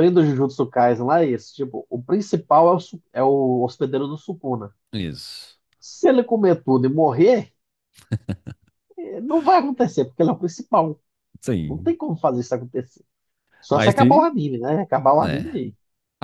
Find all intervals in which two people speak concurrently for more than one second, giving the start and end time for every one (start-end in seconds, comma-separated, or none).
none